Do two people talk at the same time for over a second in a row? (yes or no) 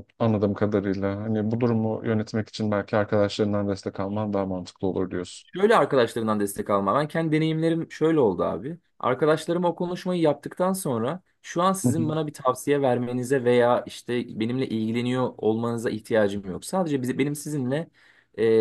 no